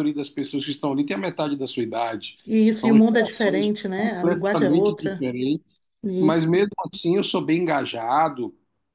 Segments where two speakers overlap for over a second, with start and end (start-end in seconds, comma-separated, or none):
2.7-5.3